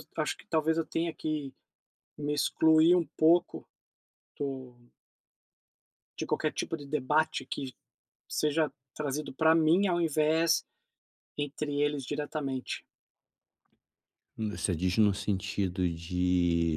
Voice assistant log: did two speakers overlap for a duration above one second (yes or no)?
no